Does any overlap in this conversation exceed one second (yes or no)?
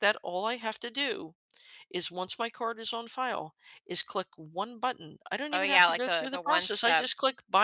yes